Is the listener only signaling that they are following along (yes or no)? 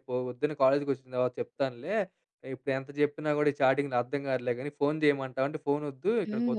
no